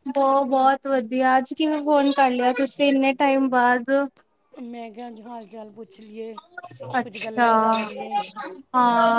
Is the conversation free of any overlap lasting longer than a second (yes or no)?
yes